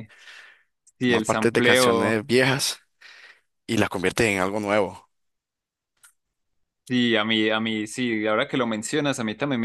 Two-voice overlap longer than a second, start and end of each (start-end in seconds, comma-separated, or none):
1.0-2.2